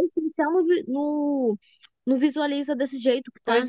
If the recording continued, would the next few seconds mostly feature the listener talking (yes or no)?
yes